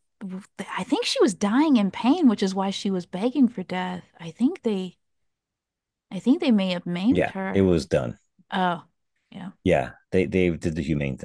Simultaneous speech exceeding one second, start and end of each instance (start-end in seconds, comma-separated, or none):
none